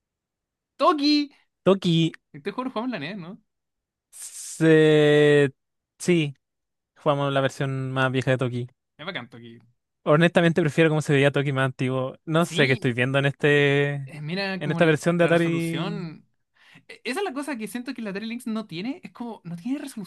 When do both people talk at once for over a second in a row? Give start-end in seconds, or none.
14.6-16.1